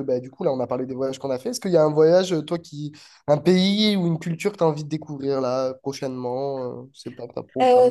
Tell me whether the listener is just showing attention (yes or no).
no